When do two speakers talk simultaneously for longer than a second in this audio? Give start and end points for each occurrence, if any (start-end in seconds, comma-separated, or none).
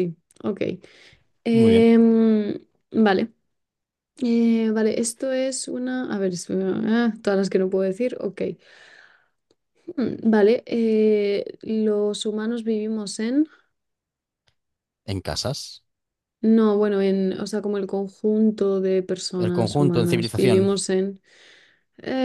19.4-20.7